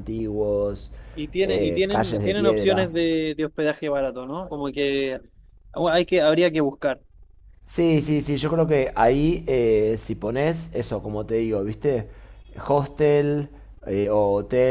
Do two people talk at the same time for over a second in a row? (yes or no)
yes